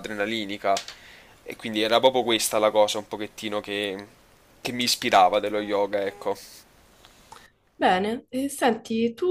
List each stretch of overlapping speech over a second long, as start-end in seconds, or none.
none